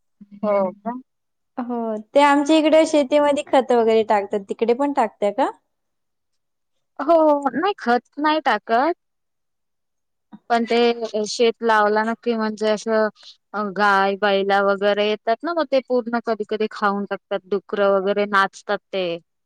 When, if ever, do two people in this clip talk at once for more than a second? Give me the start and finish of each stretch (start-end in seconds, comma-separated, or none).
none